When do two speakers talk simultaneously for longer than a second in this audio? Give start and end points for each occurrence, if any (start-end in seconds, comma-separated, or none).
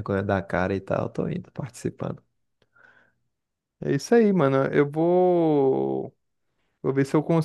none